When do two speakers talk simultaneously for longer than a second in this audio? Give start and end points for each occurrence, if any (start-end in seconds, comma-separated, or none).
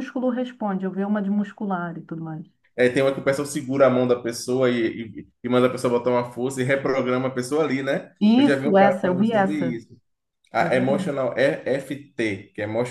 8.2-9.8